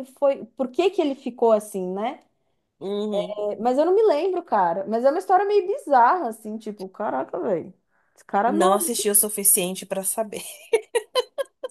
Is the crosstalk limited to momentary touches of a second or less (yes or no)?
yes